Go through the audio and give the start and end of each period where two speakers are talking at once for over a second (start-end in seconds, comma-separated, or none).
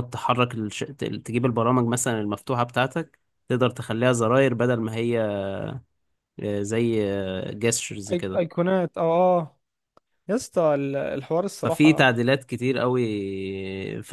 none